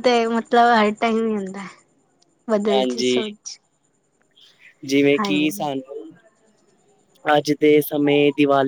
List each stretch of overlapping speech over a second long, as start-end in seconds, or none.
none